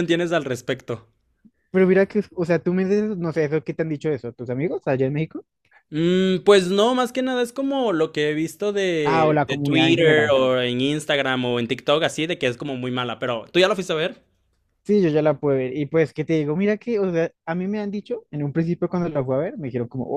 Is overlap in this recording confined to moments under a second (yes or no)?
no